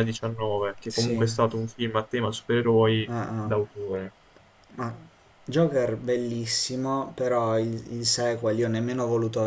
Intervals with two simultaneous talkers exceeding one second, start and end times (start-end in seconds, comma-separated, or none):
none